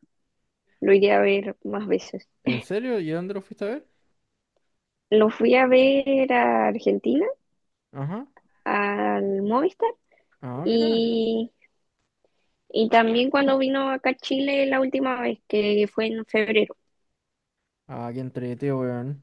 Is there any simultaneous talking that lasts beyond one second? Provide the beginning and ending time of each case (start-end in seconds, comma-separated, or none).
none